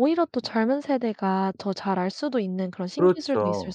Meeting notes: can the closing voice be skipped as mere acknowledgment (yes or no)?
no